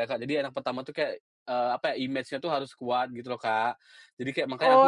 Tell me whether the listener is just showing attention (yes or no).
no